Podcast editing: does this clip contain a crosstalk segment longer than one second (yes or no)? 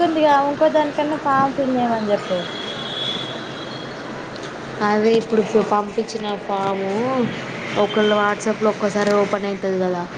no